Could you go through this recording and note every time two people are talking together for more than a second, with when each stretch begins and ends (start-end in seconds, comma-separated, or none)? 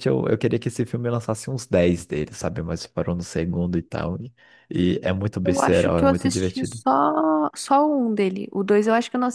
5.4-6.8